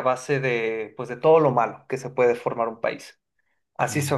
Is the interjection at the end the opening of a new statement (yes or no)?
no